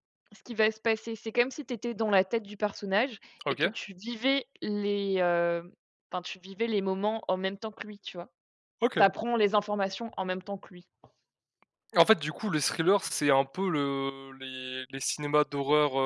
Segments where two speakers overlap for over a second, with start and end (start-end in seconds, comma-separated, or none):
none